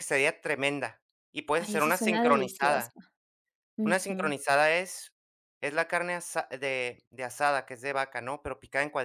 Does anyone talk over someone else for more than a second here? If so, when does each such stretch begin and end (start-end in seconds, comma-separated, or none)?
1.5-2.9